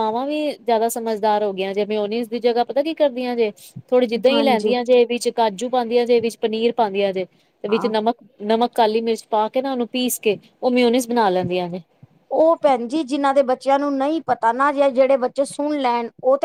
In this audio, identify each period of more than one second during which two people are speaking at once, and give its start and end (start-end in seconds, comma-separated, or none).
none